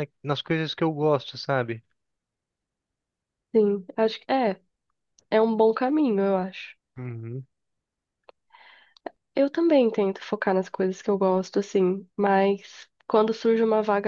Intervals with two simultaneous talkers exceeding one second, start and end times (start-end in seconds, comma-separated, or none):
none